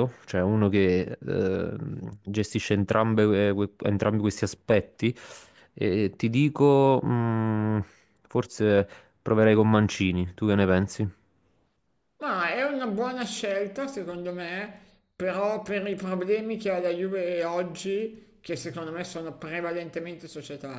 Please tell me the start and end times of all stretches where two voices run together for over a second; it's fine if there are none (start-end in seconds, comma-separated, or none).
none